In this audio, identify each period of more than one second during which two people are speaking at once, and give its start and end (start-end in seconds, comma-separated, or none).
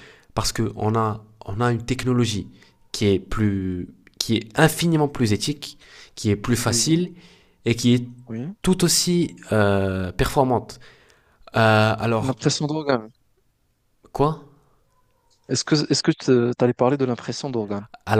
none